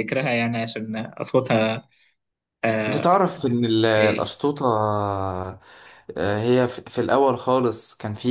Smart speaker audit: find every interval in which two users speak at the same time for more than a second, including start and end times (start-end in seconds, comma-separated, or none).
none